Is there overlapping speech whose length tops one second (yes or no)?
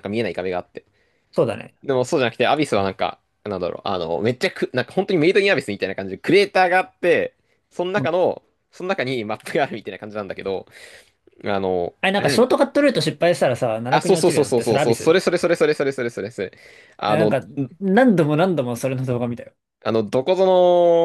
yes